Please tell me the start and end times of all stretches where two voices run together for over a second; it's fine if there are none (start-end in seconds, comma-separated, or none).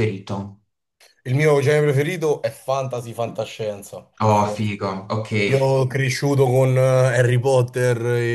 none